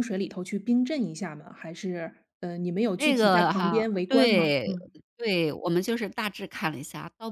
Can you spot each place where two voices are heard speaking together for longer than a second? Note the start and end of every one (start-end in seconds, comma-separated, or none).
3.0-4.7